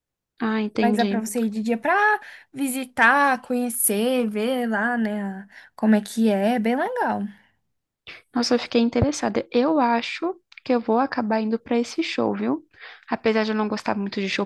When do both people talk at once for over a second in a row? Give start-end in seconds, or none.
none